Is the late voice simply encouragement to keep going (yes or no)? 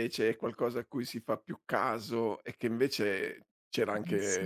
yes